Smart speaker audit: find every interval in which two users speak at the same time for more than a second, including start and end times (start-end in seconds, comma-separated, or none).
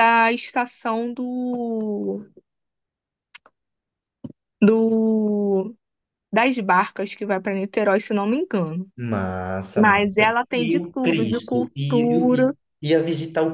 9.8-12.5